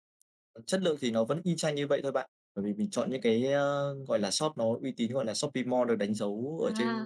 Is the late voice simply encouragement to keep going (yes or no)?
no